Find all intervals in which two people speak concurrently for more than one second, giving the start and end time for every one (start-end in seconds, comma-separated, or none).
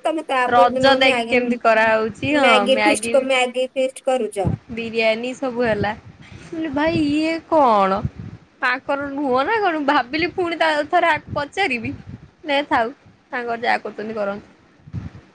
0.6-2.5